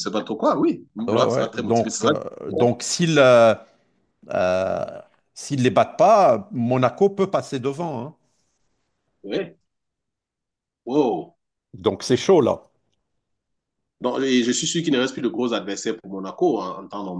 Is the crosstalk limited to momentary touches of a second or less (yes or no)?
no